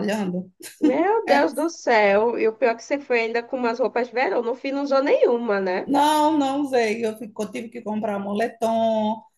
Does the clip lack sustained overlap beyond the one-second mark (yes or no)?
yes